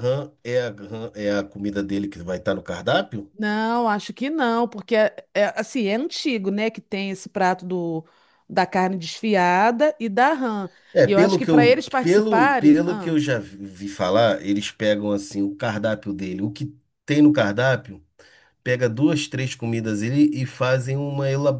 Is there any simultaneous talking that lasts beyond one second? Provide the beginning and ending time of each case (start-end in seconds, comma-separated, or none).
11.1-13.2